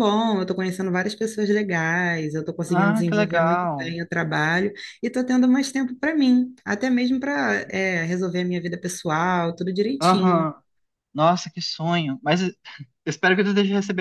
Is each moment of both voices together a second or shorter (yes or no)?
no